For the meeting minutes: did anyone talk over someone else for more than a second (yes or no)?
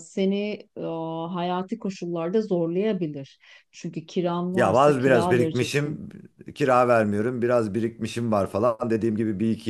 yes